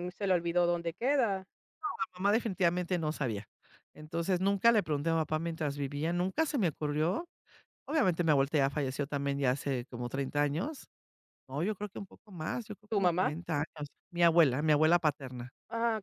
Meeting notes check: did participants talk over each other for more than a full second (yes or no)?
no